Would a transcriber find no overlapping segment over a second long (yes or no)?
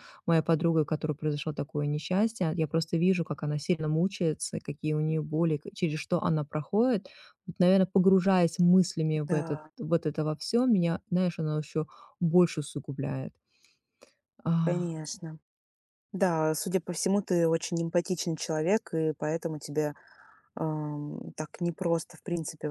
yes